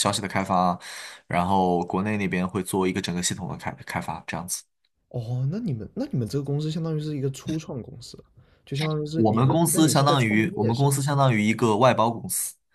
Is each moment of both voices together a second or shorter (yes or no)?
no